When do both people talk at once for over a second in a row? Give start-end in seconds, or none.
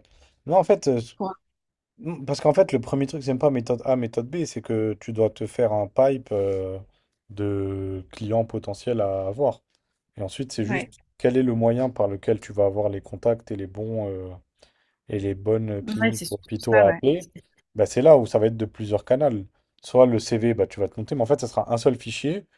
15.8-17.0